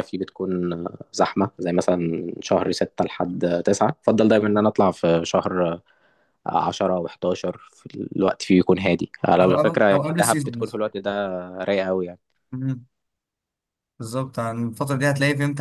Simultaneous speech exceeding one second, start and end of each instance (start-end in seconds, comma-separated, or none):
9.4-10.8